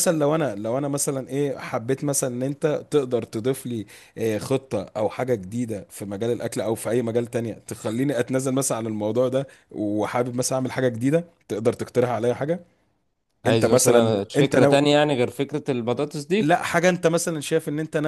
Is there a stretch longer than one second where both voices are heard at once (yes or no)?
yes